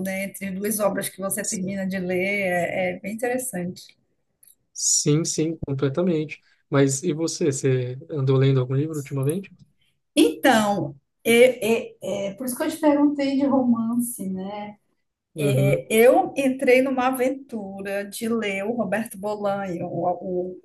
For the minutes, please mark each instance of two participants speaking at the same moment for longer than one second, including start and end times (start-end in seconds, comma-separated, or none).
none